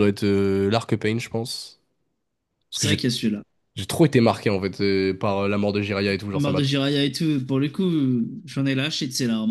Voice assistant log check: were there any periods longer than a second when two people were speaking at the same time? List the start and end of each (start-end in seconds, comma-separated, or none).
none